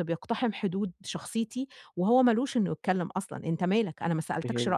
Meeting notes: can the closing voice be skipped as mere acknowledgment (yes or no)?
no